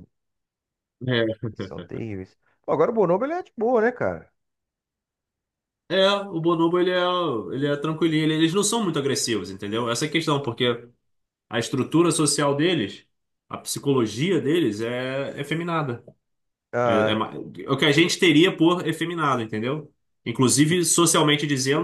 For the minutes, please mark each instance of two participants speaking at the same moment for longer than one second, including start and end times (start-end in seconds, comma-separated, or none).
none